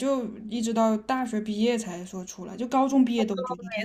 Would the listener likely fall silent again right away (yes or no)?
no